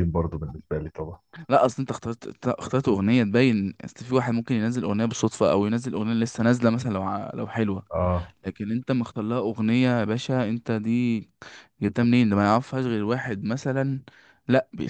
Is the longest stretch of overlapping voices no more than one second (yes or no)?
yes